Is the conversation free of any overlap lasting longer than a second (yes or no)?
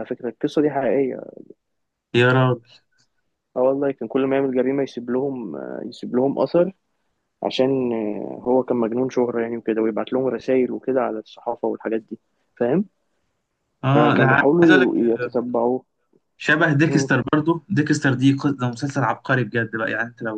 no